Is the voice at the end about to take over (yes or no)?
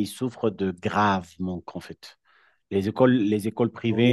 no